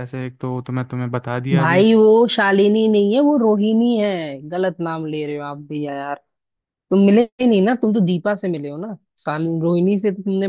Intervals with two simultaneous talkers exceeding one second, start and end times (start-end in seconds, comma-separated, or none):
none